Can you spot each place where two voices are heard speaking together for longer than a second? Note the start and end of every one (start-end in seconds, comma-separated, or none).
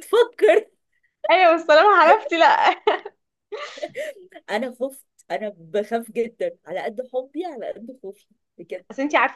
none